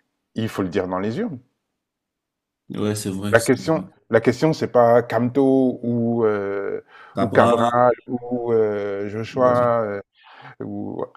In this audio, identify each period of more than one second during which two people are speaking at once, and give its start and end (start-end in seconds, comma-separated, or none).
none